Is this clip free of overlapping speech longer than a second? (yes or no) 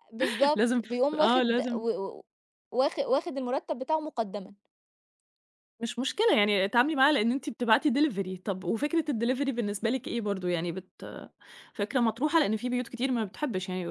no